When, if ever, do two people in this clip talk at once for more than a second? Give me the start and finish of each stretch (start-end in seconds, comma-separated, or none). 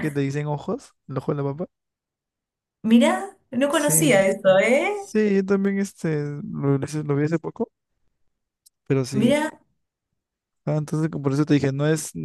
3.7-5.1